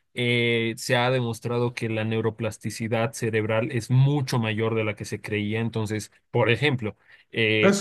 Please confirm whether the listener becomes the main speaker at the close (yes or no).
yes